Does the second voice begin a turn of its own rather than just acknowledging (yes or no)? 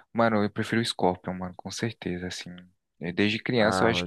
yes